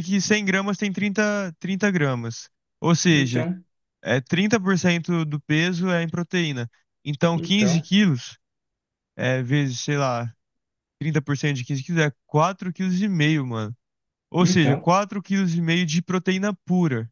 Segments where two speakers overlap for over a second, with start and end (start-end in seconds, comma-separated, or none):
none